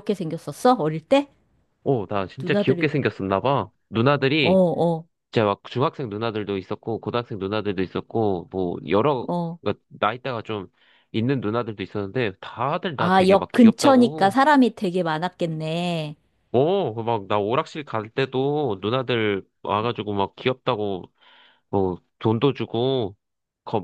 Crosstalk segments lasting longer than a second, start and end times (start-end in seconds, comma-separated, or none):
12.9-14.4